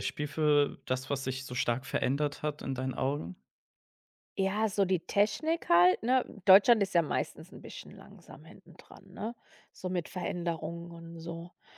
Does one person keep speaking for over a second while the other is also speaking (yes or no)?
no